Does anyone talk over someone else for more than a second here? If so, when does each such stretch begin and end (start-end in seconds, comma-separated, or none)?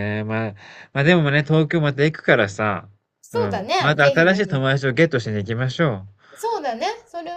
3.3-4.7